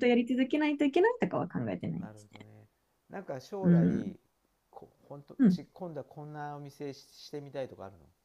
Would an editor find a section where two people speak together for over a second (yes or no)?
no